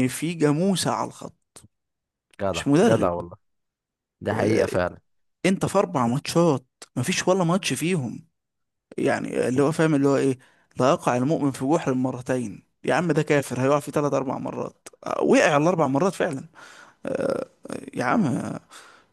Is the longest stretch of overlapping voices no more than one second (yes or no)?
yes